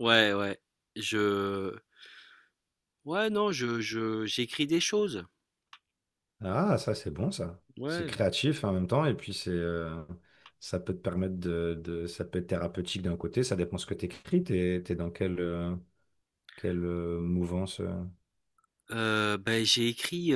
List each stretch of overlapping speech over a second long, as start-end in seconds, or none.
none